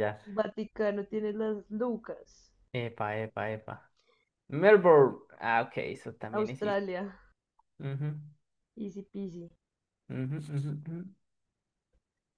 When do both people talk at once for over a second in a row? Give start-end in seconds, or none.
none